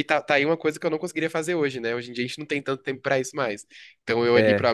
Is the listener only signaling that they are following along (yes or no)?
yes